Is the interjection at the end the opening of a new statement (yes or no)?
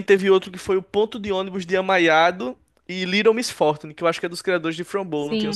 yes